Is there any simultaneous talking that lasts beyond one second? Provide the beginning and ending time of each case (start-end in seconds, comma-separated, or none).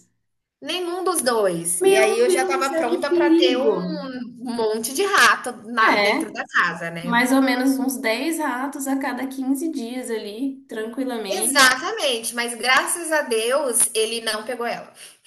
1.8-3.8